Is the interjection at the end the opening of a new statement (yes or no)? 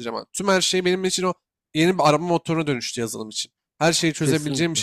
no